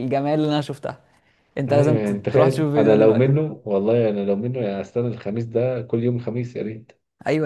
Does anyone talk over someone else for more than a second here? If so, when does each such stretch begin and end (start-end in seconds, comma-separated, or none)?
1.7-3.3